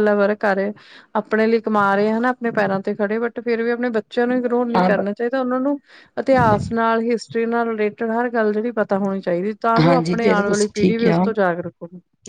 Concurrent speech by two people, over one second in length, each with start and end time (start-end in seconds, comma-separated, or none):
9.8-11.2